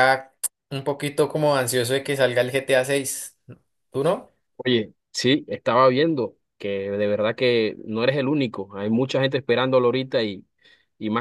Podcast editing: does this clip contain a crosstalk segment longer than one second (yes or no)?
no